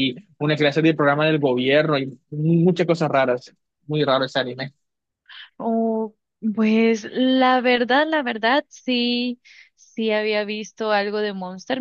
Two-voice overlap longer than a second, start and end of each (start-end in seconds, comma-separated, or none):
none